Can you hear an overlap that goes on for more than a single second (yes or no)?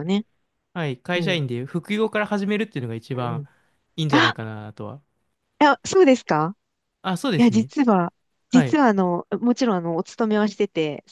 no